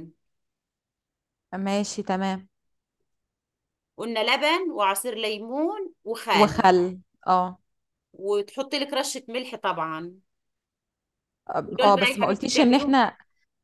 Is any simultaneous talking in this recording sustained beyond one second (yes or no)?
yes